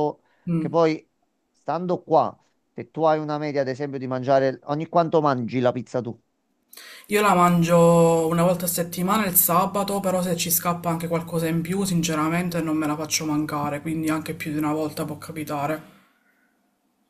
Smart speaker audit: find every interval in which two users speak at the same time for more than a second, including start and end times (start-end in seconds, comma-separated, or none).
none